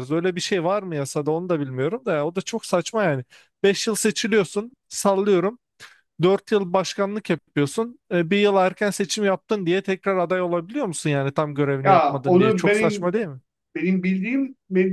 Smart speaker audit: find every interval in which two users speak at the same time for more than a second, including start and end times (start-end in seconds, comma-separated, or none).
11.8-13.1